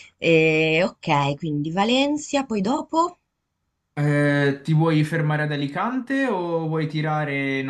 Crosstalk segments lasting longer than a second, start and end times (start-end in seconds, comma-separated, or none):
none